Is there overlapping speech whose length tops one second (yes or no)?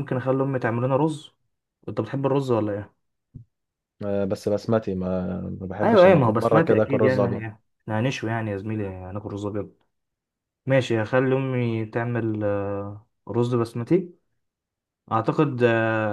yes